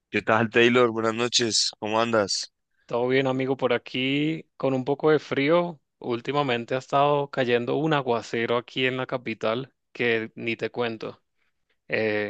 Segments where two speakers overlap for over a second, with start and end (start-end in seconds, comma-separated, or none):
none